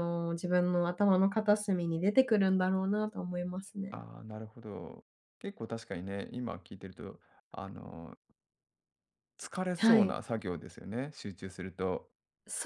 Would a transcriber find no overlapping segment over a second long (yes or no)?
yes